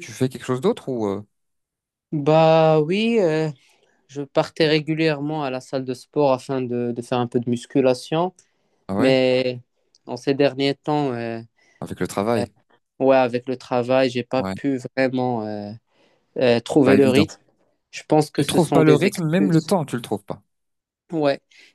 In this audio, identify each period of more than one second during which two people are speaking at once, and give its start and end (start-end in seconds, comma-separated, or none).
18.4-19.7